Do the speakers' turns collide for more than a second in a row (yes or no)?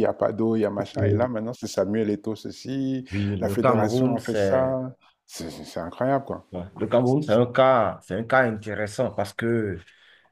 yes